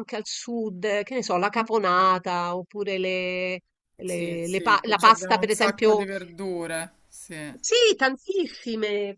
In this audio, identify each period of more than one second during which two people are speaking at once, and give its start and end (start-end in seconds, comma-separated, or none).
4.0-6.0